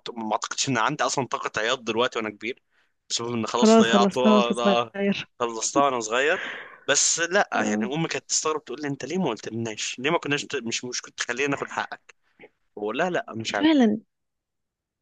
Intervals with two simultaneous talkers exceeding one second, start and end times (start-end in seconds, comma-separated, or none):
3.6-4.9